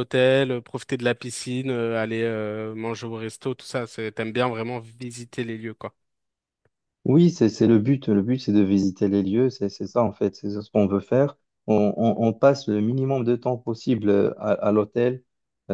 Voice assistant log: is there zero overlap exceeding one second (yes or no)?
yes